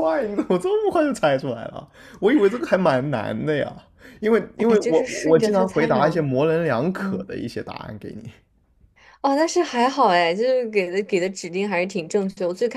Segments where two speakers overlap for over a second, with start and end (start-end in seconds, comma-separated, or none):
4.6-6.3